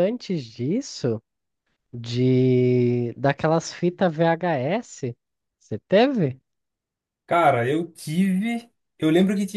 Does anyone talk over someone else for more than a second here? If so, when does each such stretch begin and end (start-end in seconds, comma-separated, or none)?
none